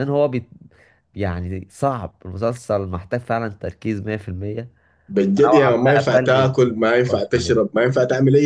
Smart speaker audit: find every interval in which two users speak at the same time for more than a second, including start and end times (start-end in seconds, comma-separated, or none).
5.5-7.5